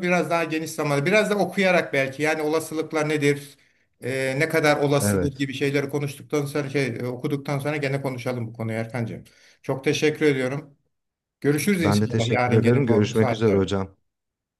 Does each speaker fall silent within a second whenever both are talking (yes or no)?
no